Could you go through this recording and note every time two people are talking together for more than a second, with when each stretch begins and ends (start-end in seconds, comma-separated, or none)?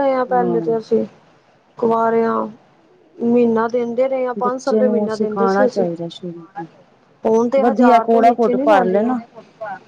4.4-5.8, 7.6-9.1